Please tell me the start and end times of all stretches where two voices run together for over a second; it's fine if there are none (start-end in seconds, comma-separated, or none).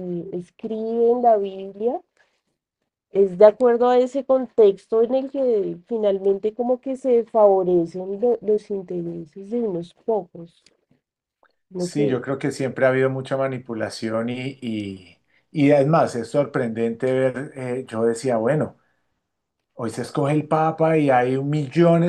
none